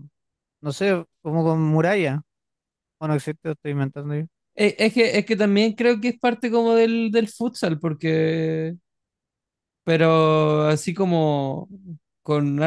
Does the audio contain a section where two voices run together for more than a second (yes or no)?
no